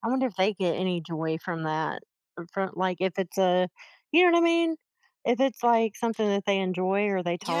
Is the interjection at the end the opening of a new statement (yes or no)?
yes